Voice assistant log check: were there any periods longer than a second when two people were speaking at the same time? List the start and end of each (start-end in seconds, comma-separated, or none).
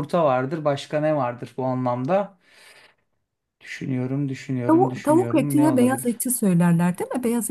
4.7-6.2